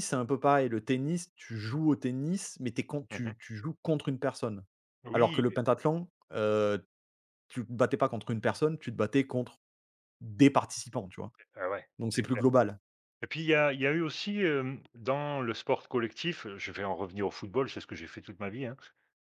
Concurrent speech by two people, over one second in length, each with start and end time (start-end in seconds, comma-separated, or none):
none